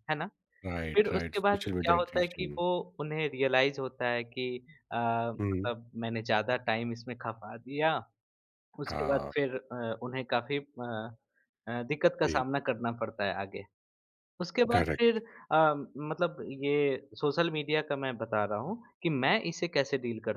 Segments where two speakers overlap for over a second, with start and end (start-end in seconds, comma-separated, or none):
0.9-2.6